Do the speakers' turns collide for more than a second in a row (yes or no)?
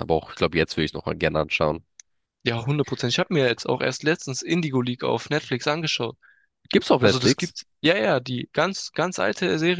no